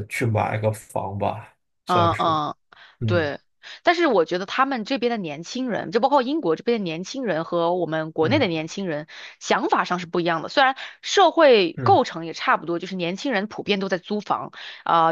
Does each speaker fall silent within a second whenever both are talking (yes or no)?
yes